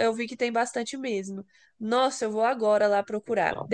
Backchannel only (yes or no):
yes